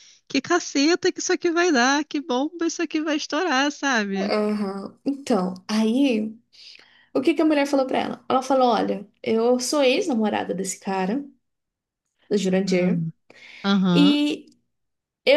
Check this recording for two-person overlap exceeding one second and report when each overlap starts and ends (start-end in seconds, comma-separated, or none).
none